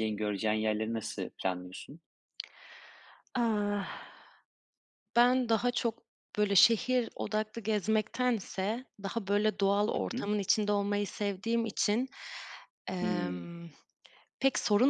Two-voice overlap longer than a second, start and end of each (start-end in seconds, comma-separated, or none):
none